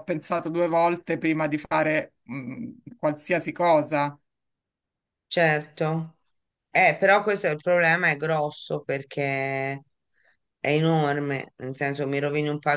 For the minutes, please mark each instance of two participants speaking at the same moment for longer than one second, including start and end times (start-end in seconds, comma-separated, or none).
none